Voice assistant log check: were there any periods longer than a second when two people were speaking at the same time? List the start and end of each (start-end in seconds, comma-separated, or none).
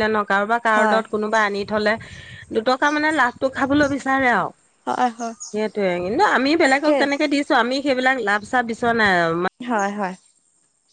none